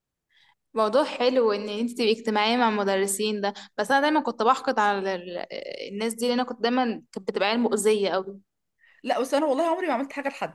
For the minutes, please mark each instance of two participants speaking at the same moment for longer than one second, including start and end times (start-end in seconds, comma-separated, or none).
none